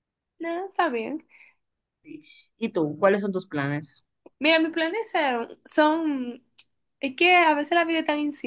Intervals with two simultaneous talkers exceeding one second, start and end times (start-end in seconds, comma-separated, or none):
none